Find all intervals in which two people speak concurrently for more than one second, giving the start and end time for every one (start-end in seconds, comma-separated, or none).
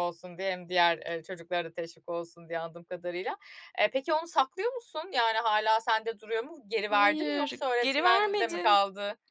6.9-8.8